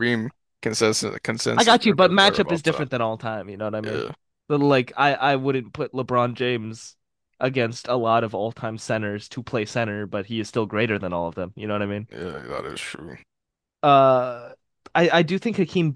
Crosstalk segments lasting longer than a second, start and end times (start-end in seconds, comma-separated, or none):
1.6-2.9